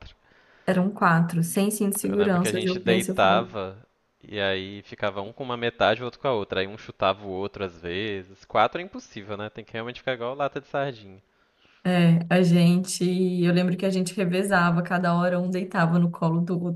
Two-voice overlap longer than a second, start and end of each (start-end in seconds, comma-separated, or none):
2.0-3.5